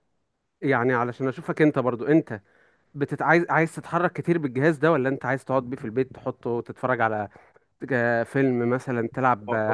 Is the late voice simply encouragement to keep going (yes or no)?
no